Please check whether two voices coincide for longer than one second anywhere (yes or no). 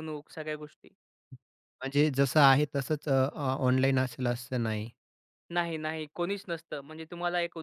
no